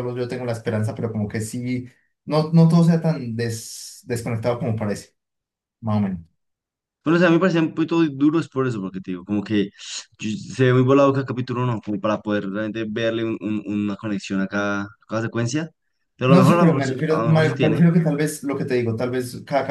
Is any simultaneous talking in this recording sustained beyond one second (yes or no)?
yes